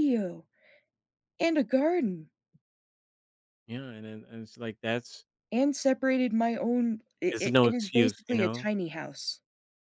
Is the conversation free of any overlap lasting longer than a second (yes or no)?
no